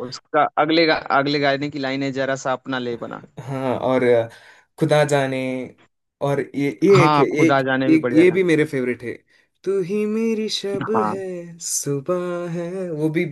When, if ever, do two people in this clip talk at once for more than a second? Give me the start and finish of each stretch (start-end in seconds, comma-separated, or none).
7.0-8.4